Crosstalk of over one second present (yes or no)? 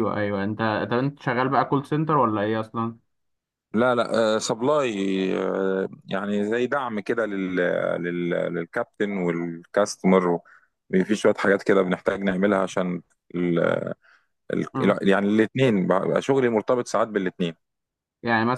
no